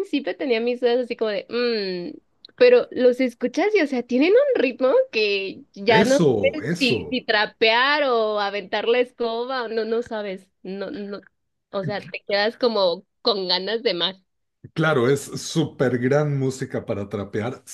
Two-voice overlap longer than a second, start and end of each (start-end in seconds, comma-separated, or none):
5.9-7.2